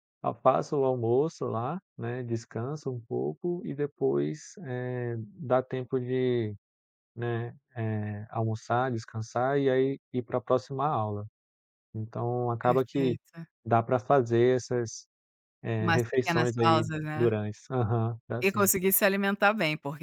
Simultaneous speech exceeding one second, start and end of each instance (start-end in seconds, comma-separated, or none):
15.8-17.3